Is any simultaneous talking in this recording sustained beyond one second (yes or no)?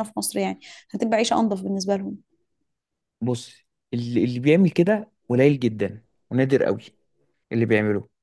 no